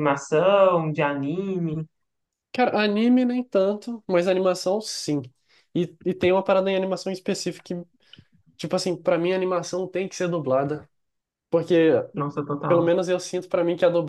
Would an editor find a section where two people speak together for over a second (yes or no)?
no